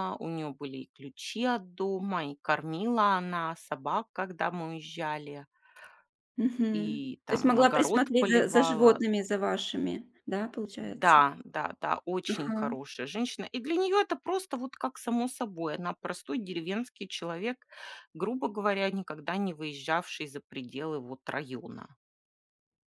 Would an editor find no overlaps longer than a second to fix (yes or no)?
no